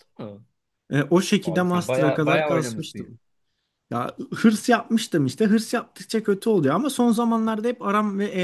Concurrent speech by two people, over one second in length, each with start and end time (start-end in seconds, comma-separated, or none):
1.4-3.1